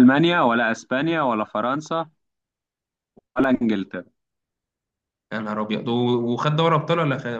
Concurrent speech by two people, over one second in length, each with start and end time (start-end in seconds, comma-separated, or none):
none